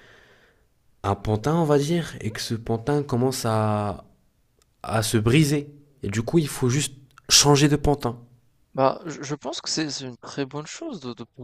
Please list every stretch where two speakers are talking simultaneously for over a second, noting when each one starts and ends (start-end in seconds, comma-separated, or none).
none